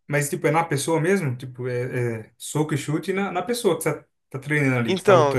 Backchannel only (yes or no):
no